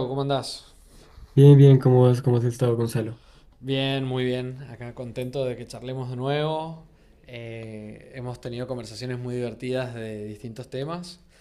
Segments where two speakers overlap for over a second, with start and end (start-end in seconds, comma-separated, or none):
none